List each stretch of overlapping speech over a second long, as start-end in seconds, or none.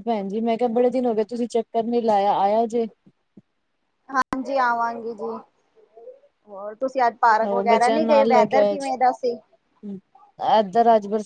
7.4-8.9